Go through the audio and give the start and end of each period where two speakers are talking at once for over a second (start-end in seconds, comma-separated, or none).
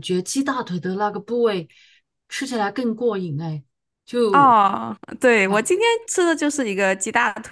none